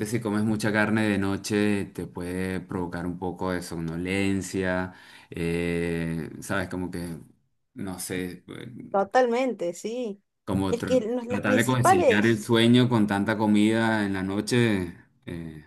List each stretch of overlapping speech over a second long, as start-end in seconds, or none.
10.7-12.5